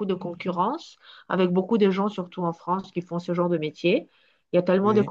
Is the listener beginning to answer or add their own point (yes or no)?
no